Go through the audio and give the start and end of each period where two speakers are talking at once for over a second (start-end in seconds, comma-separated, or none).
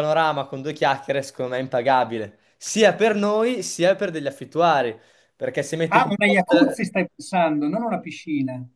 none